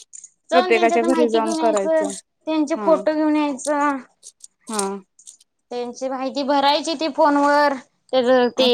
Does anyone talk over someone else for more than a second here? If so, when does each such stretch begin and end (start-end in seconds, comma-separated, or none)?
0.5-2.1